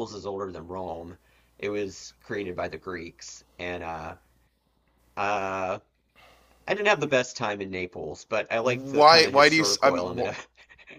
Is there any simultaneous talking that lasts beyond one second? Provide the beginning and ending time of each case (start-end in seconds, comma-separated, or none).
8.6-10.1